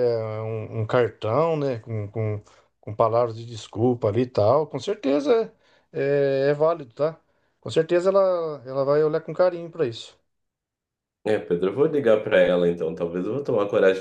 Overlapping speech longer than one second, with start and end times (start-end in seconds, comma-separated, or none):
none